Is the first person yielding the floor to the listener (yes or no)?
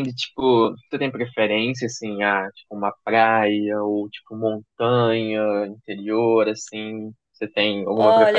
yes